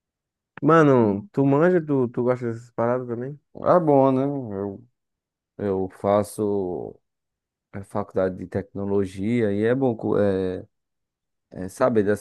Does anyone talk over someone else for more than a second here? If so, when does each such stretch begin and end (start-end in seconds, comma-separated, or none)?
none